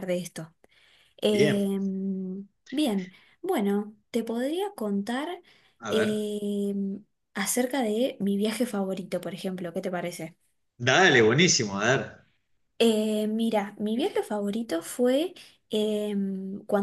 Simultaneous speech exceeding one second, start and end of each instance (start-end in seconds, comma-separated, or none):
none